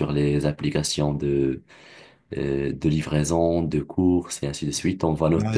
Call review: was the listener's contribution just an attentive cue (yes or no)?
no